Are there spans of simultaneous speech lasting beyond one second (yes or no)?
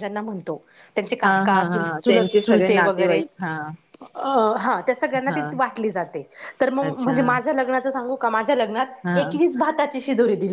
yes